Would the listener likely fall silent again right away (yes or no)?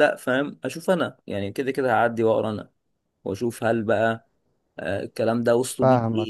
yes